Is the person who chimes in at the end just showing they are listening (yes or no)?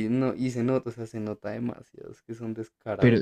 no